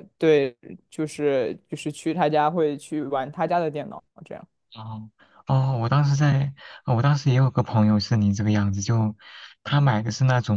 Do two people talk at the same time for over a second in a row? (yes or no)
no